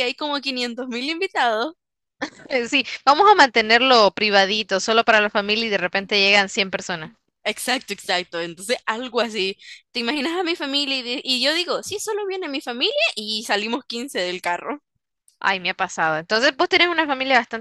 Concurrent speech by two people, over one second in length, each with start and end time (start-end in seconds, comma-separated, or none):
none